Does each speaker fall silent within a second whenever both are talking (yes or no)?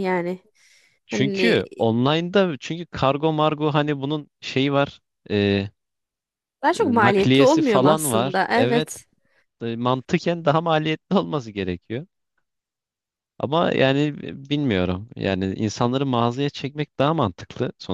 no